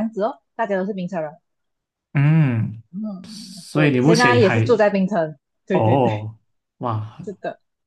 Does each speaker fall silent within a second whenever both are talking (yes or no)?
no